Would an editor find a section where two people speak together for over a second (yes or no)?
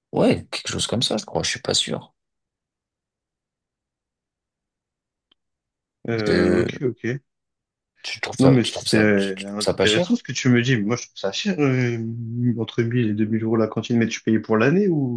yes